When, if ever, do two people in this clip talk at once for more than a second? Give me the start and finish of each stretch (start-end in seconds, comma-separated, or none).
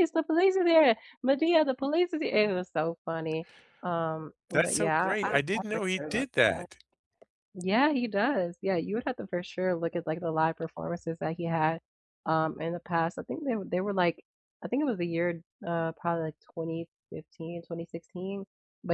4.5-6.7